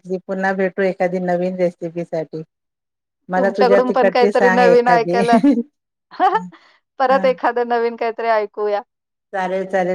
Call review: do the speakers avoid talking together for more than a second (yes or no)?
no